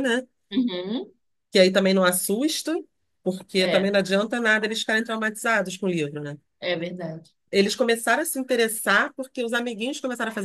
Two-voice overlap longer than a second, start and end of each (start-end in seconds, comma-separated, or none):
none